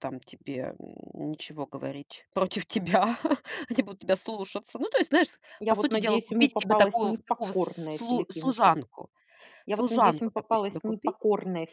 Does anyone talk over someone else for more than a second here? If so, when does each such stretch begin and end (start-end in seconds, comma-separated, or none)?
5.7-8.7, 9.7-11.2